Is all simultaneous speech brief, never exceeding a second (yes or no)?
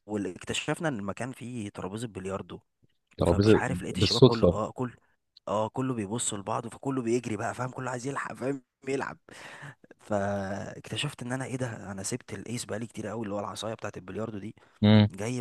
no